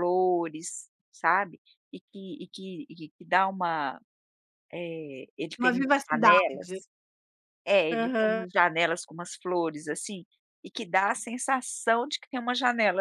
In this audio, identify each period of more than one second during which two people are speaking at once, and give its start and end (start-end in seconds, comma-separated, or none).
5.6-6.8